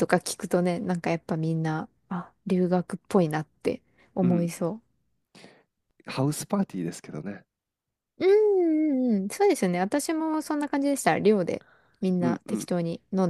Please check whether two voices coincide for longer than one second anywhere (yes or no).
no